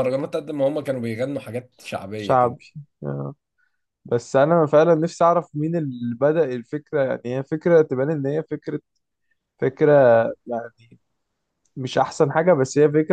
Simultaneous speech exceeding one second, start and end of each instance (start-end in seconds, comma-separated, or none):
none